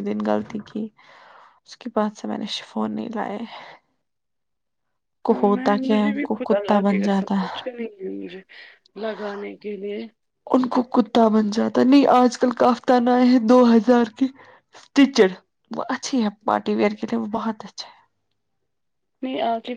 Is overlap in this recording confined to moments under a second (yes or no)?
no